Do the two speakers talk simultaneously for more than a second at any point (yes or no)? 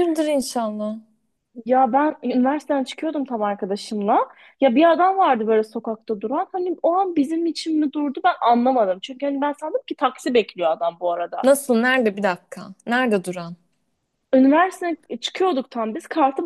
no